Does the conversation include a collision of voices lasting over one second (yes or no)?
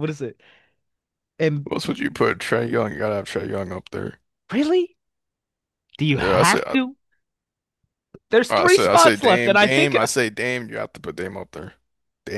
yes